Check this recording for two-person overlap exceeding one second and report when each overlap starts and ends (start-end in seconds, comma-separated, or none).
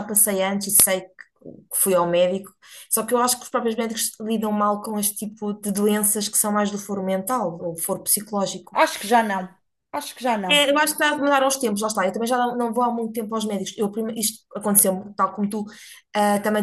none